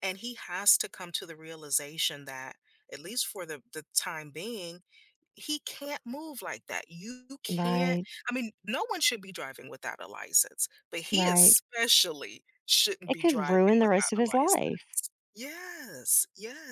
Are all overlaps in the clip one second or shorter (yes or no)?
no